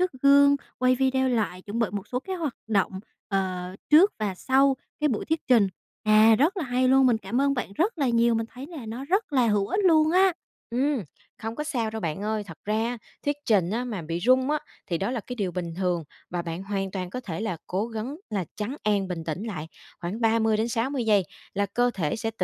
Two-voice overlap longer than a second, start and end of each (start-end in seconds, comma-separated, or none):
none